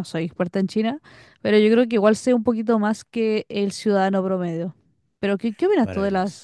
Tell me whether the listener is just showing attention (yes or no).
yes